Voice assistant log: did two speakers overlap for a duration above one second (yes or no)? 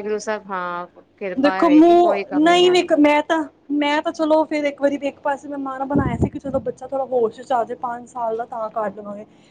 yes